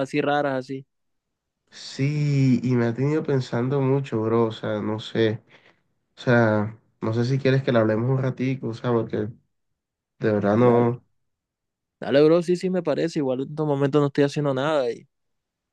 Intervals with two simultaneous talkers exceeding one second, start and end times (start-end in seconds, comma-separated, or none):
none